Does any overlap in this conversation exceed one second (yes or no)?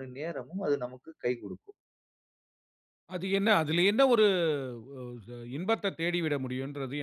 no